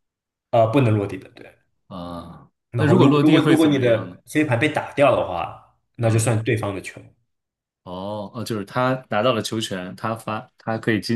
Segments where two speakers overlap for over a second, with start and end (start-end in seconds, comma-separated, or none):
2.7-4.2